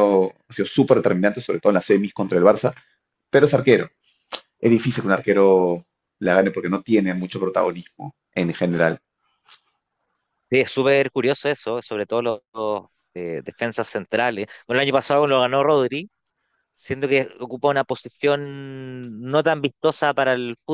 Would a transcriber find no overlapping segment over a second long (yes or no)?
yes